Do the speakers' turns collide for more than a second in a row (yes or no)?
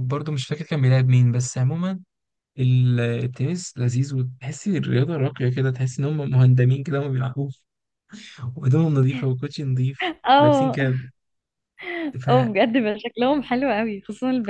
no